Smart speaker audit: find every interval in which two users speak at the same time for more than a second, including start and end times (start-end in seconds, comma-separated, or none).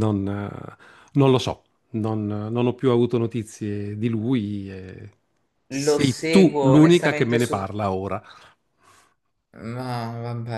5.7-7.6